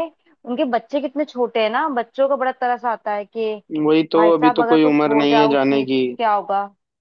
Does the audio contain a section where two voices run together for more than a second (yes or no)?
yes